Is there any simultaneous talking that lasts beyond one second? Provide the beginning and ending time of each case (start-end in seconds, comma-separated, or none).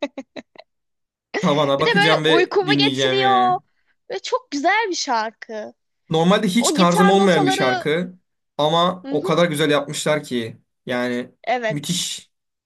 1.8-3.6, 6.6-7.9